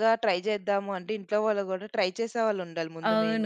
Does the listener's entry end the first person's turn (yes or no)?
yes